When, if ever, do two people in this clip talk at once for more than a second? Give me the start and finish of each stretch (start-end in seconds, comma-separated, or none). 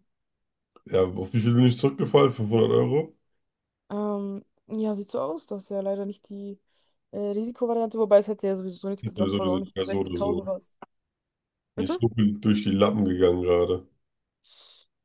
9.0-10.4